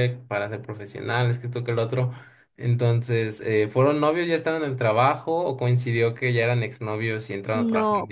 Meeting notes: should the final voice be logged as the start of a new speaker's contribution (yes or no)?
yes